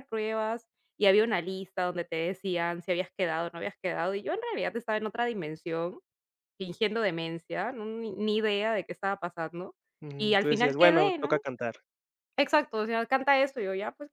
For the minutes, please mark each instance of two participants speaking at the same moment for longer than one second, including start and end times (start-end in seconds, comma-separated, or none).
10.2-11.4